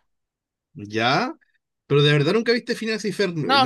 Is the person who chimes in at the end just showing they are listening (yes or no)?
no